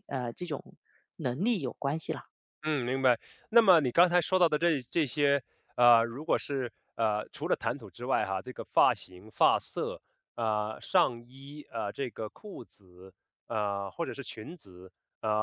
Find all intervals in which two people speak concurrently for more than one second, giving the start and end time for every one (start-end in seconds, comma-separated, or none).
none